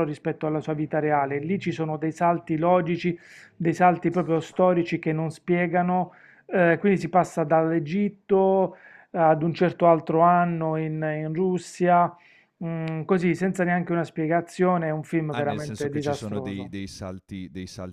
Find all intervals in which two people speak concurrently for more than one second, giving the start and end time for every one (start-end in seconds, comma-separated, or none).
15.3-16.7